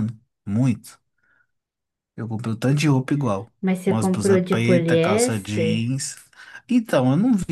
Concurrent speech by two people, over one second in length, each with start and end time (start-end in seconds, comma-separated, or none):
3.9-6.0